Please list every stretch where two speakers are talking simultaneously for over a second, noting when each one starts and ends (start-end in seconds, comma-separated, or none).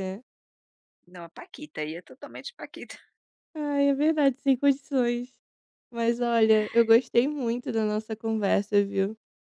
none